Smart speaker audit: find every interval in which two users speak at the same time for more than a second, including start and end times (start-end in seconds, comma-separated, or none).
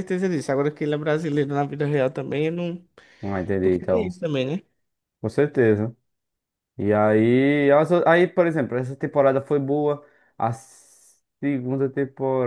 none